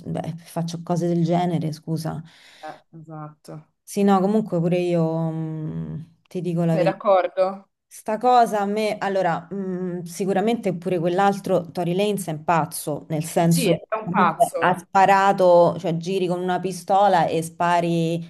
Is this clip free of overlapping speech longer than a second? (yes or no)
no